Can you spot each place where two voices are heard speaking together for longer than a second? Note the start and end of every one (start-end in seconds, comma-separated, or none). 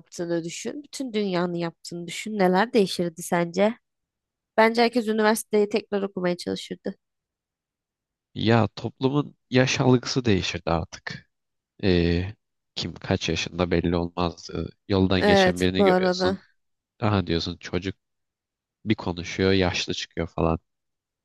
15.2-16.4